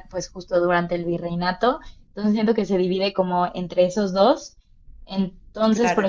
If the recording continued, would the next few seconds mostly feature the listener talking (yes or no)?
no